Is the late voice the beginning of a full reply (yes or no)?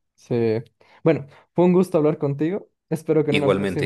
no